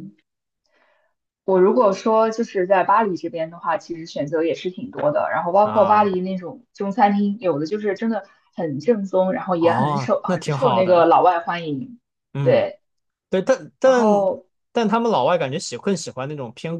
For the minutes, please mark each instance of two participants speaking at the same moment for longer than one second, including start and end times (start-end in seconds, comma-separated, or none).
9.6-11.1